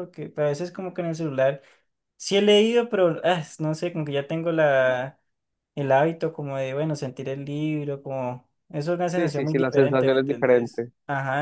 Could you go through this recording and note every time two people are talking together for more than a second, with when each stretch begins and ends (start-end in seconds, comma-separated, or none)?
9.1-10.9